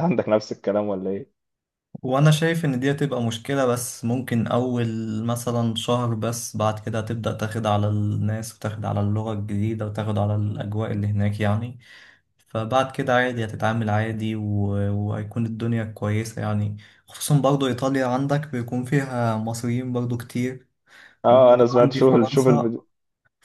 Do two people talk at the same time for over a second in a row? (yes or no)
yes